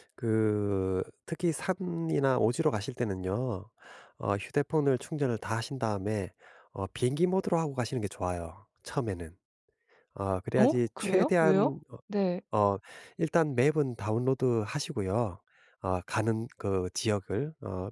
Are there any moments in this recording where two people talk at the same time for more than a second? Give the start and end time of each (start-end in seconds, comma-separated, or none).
10.6-11.8